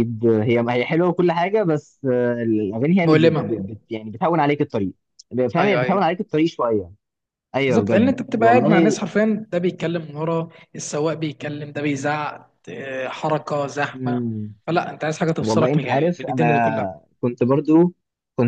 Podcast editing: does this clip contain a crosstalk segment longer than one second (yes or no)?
yes